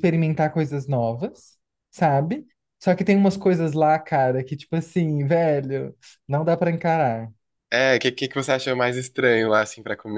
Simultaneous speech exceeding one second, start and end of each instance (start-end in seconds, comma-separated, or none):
none